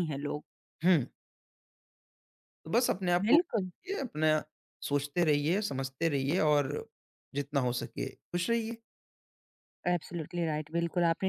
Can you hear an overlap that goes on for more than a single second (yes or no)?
no